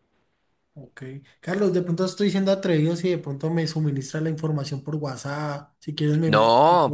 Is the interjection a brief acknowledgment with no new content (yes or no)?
no